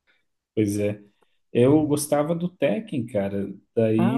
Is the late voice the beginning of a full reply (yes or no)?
no